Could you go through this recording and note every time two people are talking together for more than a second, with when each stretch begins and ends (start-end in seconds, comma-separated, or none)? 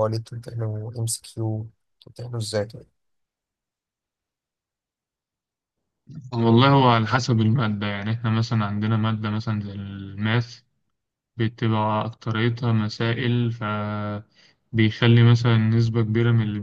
none